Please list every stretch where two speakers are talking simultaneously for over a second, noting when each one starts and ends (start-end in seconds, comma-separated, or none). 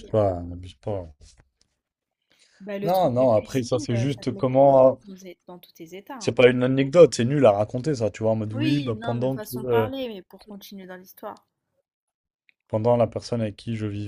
2.8-5.0, 8.5-9.9